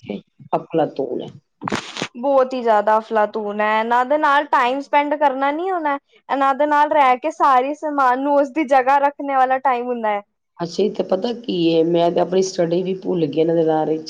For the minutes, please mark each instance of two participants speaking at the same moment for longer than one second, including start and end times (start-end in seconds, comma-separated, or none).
none